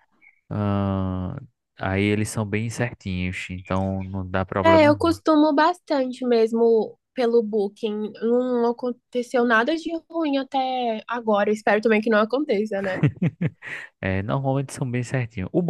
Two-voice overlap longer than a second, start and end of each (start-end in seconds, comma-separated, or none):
none